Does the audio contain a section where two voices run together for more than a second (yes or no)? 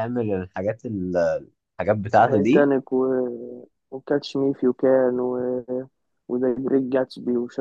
no